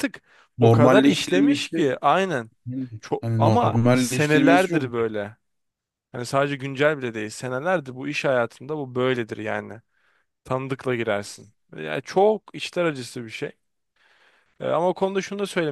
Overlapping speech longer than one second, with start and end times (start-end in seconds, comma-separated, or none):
0.6-1.9, 3.2-5.1